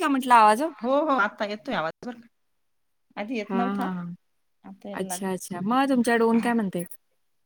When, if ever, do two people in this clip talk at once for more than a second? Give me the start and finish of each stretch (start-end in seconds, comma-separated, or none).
4.9-6.5